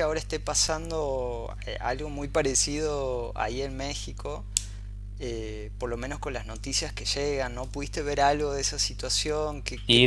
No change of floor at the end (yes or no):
no